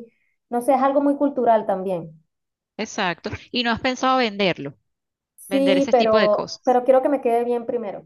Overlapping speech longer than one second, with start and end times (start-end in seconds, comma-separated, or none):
5.5-6.8